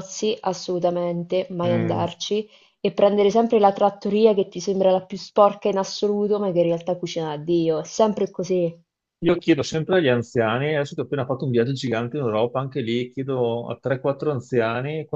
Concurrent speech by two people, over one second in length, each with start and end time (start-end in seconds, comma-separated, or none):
none